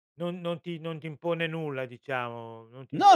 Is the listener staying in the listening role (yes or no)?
no